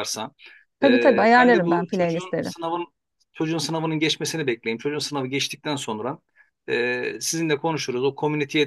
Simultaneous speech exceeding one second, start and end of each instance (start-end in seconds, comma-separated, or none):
0.8-2.5